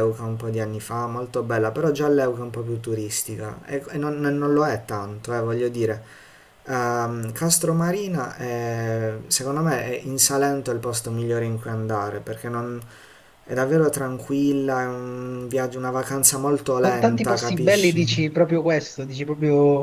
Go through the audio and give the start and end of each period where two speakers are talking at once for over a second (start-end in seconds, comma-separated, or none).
16.8-18.0